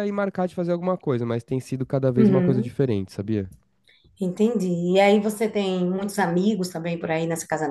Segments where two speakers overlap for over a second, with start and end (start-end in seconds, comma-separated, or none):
none